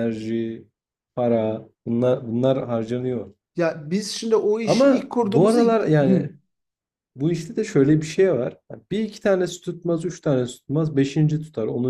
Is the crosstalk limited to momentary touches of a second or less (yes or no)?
no